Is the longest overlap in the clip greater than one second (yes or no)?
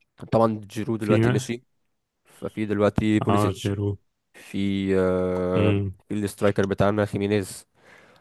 no